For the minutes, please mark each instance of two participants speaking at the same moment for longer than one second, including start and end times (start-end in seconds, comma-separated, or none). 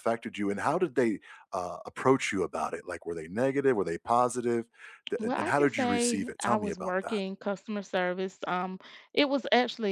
5.2-7.2